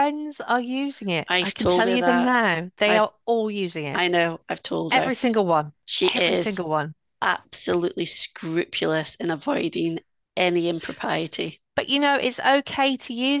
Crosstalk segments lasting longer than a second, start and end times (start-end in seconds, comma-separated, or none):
1.3-3.0